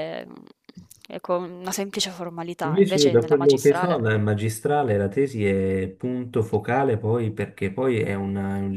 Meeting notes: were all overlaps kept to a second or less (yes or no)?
no